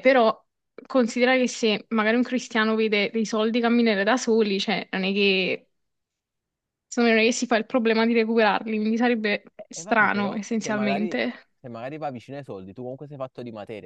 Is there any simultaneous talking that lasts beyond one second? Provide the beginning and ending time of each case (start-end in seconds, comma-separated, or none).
9.6-11.2